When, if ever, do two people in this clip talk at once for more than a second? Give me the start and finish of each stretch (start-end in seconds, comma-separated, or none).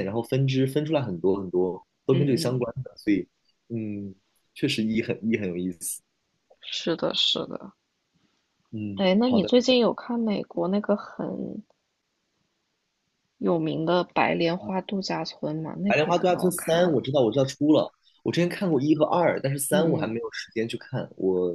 15.9-17.1